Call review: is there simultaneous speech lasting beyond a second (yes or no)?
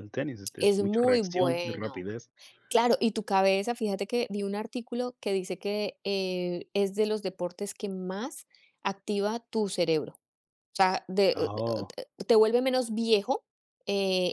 yes